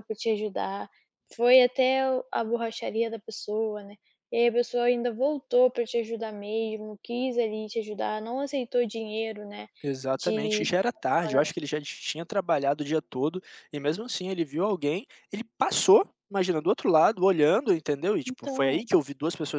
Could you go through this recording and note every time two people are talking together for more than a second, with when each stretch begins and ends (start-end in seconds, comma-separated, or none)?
none